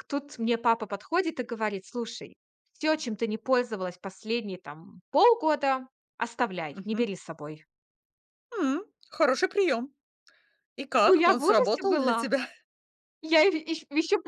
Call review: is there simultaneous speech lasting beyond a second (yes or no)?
yes